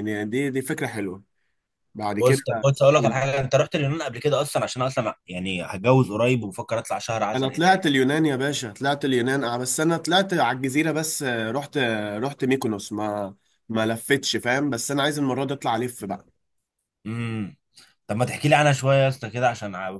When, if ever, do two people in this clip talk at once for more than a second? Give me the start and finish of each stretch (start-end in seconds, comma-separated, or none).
none